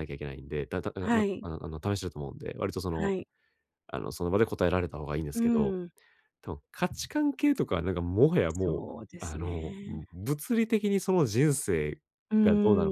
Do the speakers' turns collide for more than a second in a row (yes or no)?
yes